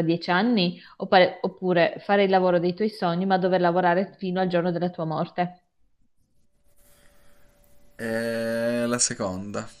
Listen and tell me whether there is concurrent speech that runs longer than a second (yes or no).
no